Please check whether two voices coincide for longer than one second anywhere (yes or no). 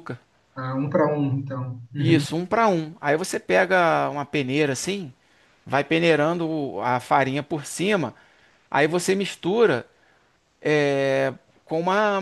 no